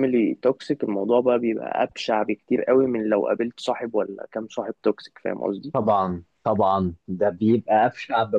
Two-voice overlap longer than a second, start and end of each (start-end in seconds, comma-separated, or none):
none